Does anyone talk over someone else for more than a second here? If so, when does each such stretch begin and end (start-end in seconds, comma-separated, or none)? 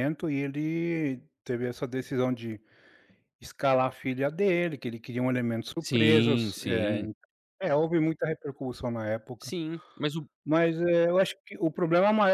5.8-7.0